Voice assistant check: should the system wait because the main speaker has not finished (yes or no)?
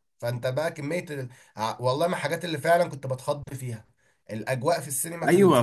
no